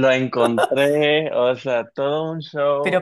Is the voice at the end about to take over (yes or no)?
yes